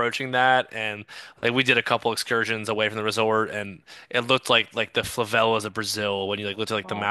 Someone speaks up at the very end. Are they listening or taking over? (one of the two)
listening